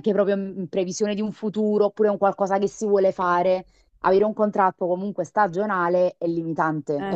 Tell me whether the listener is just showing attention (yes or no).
no